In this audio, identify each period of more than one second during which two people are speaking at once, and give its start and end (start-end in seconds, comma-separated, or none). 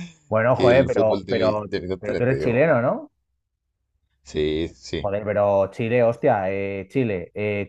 0.5-2.7